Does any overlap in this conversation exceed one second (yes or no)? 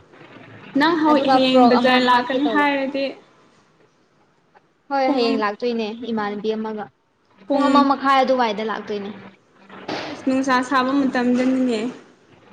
yes